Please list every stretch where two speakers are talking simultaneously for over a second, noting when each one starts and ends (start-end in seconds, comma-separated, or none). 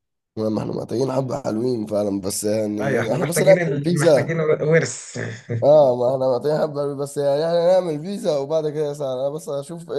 2.8-4.4